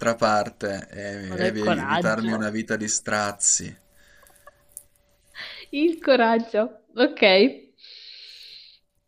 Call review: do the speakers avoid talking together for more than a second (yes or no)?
no